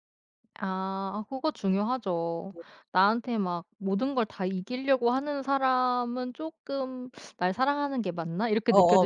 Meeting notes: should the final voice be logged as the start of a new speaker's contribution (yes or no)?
yes